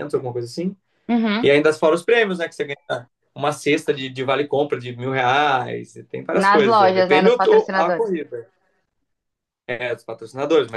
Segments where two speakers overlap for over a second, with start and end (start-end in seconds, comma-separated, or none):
6.4-8.1